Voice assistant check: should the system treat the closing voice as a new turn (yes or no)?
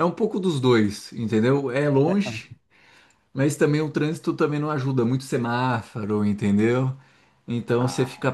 no